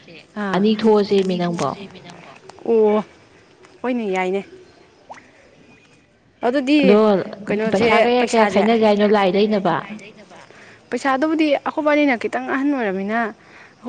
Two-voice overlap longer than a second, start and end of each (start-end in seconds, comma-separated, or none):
7.7-9.8